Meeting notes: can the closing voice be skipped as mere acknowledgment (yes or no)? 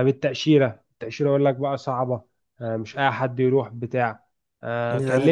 yes